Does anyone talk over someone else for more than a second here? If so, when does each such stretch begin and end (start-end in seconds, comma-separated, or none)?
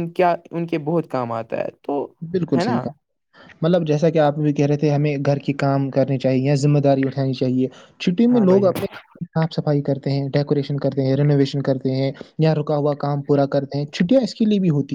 none